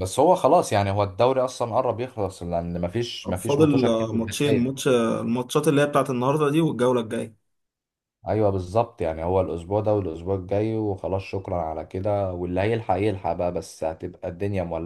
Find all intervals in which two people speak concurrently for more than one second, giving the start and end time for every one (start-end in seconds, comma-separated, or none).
3.2-4.8